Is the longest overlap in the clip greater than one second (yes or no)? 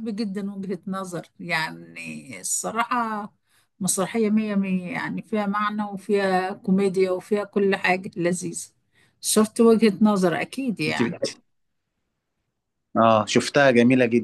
no